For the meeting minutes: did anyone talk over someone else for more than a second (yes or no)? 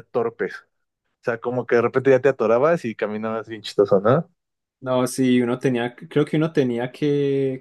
no